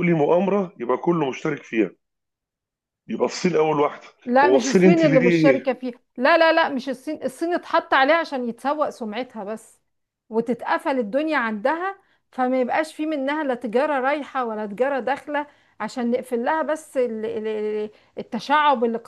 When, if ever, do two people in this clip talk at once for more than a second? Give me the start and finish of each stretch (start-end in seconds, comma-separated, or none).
4.4-5.7